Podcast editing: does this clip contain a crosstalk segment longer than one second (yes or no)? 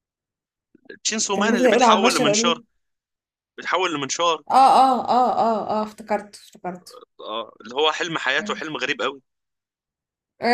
yes